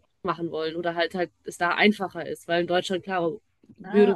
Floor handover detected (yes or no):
yes